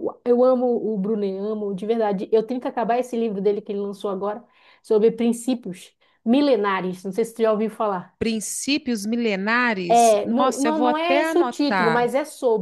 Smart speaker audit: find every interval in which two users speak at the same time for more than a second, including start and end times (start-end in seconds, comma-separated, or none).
9.9-12.1